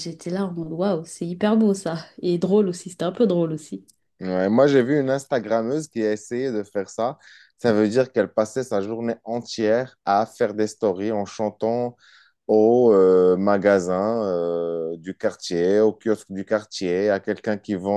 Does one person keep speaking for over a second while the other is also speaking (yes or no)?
no